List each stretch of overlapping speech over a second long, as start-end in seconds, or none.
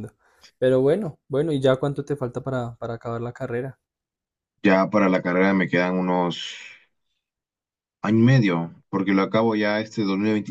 none